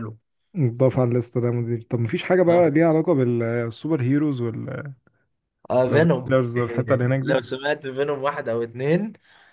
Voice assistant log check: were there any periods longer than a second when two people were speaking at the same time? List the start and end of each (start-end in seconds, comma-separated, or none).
5.9-7.4